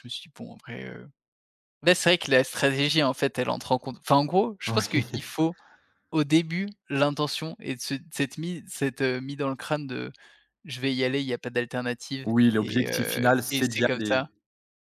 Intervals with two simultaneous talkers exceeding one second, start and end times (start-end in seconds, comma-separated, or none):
12.2-14.3